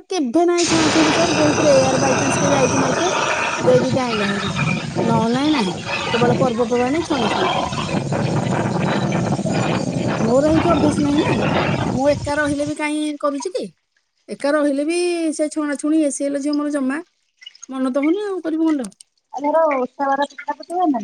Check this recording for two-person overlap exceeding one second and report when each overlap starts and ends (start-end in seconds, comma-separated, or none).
none